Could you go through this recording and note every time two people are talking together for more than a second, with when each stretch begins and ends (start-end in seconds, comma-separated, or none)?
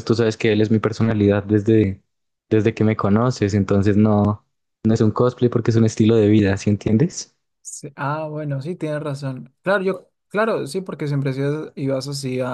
none